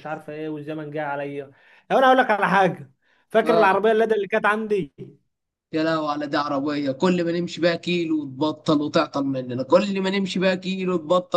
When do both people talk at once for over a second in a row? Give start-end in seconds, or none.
none